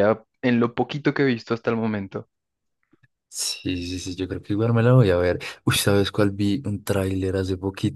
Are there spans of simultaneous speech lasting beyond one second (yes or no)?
no